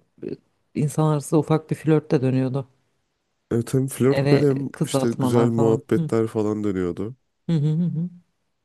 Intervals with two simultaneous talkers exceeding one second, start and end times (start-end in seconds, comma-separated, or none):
4.1-6.1